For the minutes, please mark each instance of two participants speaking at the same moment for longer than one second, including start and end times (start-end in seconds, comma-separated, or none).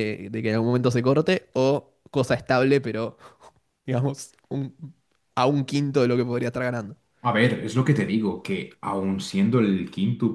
none